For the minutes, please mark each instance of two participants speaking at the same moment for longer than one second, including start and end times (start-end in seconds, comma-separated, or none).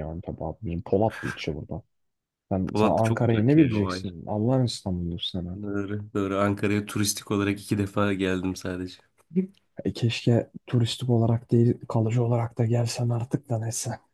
2.7-4.1